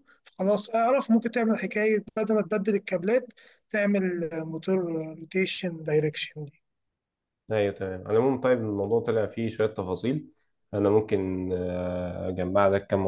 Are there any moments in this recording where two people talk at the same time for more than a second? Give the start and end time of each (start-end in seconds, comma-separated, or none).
none